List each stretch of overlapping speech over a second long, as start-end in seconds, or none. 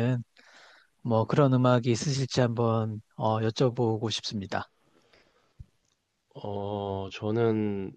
none